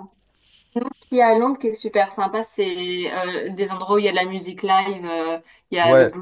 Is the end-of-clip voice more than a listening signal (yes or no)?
no